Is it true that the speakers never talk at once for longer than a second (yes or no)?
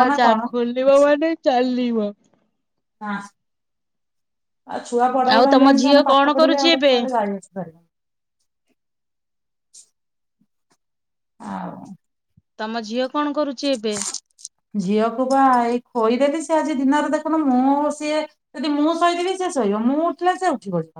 no